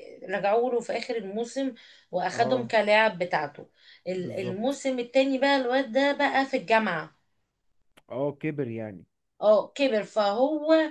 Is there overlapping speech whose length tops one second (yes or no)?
no